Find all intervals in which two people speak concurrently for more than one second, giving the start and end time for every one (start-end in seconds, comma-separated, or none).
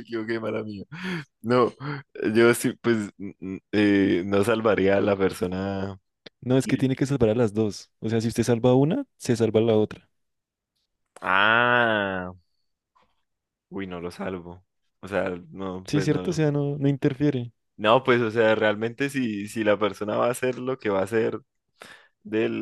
none